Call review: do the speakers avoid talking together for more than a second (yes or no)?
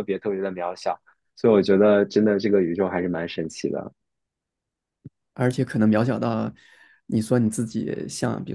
yes